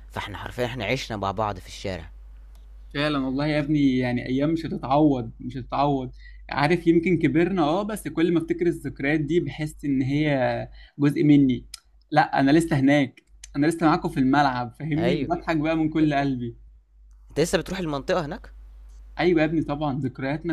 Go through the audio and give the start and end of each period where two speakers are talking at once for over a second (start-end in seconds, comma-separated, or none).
none